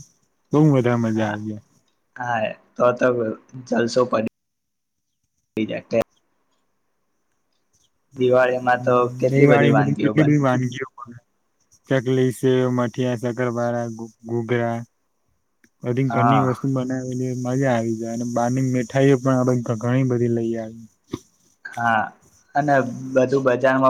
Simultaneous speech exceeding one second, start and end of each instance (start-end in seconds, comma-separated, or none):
8.2-10.3